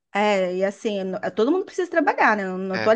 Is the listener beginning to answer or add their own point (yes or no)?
no